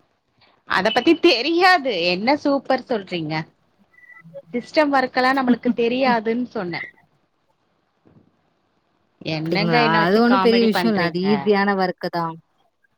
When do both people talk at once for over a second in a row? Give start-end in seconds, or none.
9.4-11.2